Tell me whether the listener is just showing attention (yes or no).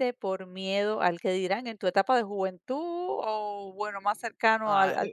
no